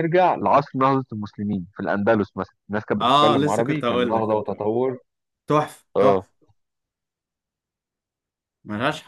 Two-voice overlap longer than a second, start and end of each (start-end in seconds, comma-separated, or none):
3.0-4.7